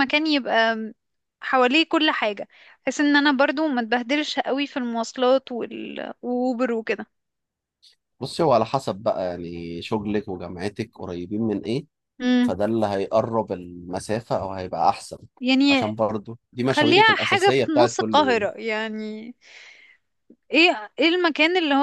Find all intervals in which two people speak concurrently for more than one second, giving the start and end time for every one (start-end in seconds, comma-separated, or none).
16.7-18.5